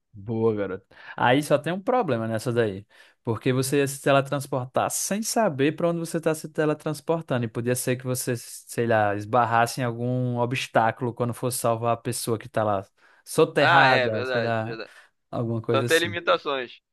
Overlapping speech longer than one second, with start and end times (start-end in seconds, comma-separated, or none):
13.6-14.8